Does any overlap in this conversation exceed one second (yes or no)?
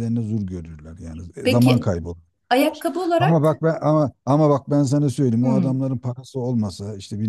no